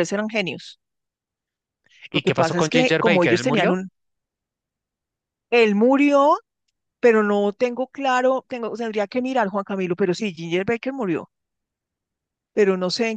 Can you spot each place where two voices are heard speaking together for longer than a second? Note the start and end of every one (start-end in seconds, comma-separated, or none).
2.1-3.8